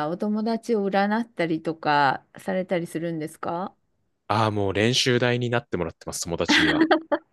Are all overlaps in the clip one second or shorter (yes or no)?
yes